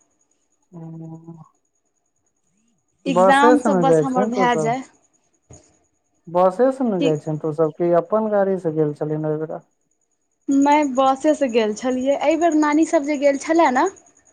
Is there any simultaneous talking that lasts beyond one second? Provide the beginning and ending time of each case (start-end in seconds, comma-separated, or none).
3.1-4.7